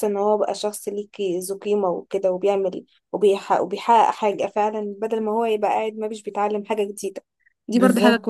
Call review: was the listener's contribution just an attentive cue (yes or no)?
yes